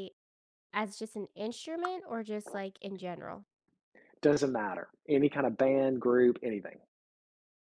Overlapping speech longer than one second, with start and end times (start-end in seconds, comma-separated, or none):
none